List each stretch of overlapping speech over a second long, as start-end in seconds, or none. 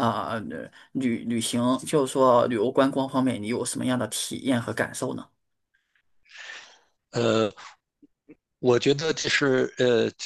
none